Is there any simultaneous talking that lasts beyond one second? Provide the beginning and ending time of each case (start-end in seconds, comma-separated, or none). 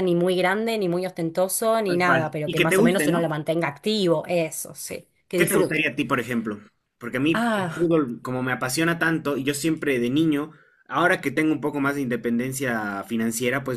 1.9-3.3